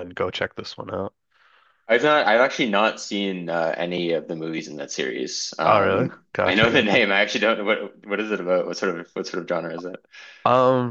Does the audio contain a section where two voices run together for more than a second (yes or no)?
yes